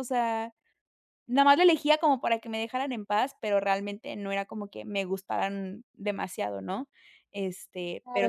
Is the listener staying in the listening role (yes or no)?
no